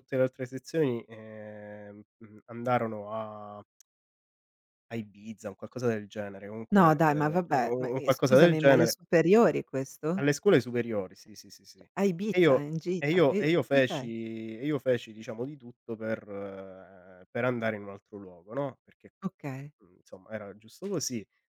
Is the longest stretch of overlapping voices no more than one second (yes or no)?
no